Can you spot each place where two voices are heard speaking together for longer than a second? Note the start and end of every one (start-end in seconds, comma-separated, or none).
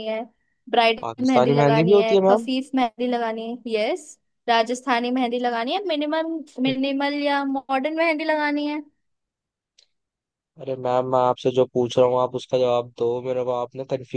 1.0-2.5